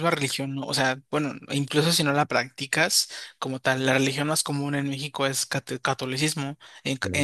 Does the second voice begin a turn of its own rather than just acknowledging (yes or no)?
no